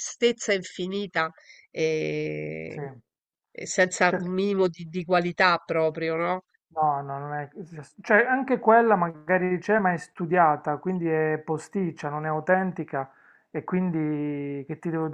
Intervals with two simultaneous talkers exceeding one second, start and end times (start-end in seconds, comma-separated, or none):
none